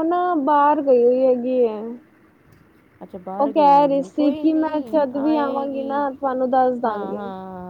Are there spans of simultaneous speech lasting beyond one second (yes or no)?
yes